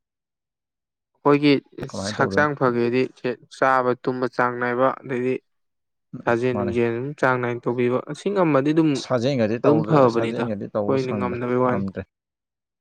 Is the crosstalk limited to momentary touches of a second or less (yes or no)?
no